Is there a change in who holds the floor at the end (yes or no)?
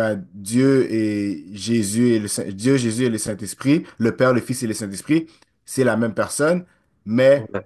no